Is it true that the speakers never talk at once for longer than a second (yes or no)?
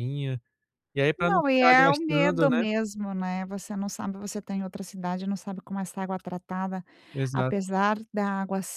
no